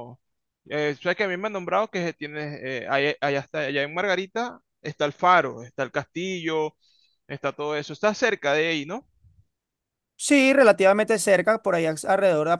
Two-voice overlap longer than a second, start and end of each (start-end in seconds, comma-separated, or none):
none